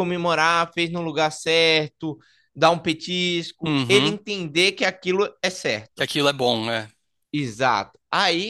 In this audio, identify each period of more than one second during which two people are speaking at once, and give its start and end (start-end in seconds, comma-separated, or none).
none